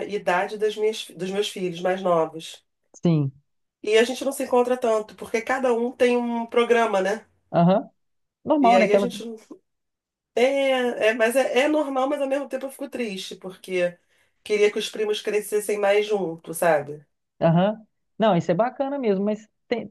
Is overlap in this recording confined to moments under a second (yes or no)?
yes